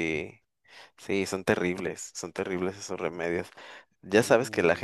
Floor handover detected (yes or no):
no